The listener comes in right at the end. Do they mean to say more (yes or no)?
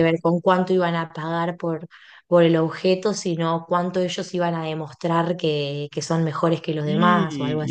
yes